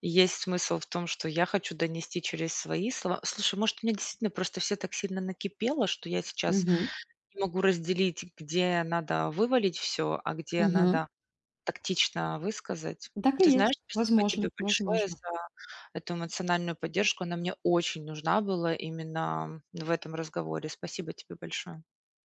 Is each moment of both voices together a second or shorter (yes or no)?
no